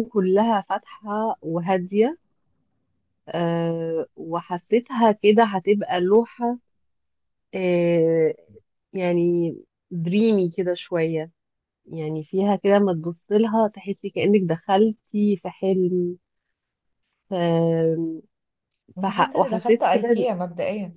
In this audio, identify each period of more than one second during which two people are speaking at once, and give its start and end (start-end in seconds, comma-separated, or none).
19.0-20.3